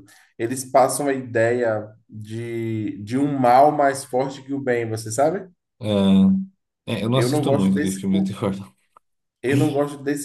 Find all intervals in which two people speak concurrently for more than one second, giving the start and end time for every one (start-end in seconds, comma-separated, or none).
7.1-8.4